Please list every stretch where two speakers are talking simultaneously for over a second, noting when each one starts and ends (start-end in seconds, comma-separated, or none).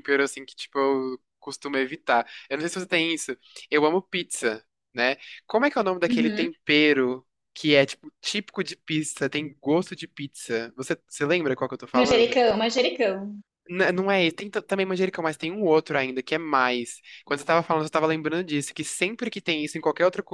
none